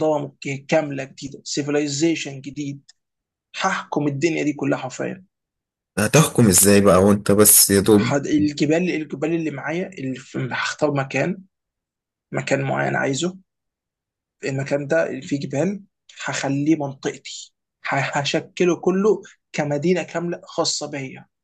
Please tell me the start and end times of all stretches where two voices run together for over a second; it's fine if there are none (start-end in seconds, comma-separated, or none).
none